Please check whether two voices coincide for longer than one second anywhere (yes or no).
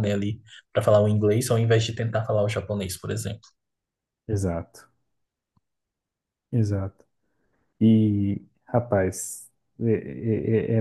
no